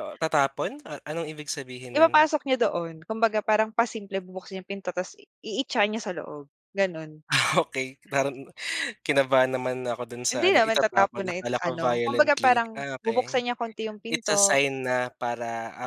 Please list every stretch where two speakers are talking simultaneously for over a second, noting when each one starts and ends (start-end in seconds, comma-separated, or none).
10.3-13.4